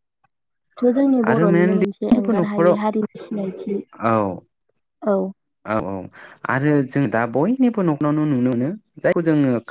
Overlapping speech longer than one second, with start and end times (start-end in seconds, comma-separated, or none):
1.3-2.8